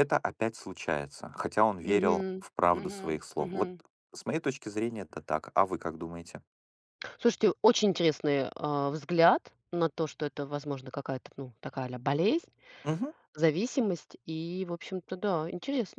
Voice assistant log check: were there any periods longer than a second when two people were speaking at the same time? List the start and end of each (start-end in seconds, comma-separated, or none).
1.9-3.7